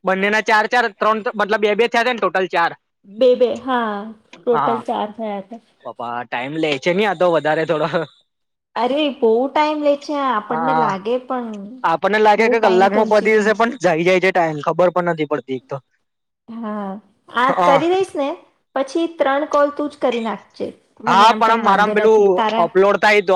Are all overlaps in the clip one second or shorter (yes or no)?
no